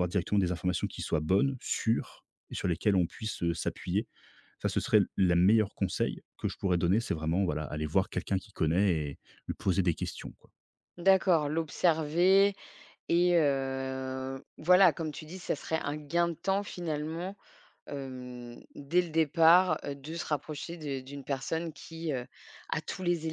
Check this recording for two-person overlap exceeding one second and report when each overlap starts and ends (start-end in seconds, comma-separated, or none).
none